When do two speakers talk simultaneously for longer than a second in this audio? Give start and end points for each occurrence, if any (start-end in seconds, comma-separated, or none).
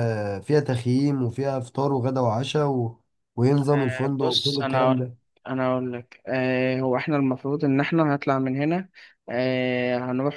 3.7-5.1